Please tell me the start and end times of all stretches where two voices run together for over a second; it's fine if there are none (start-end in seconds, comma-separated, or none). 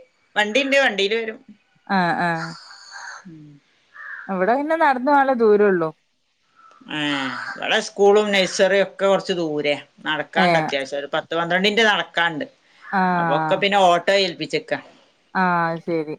none